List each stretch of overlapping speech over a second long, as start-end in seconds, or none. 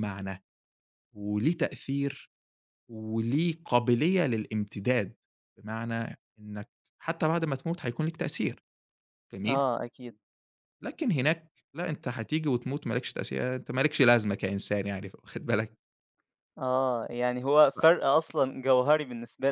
none